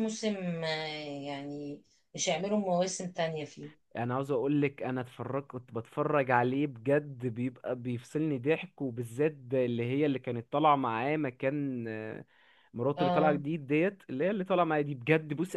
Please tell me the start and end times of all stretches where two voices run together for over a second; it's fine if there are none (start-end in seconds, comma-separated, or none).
none